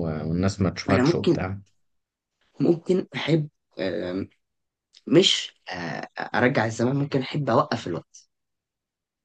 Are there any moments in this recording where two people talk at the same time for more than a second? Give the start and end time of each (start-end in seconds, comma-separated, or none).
none